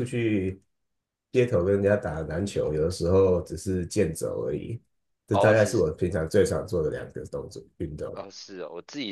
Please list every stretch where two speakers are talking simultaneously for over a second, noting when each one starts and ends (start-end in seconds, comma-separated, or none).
none